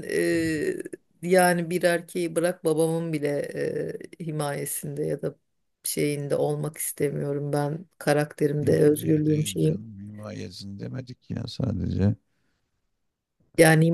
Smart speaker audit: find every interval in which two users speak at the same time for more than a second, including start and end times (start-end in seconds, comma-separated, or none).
8.6-9.8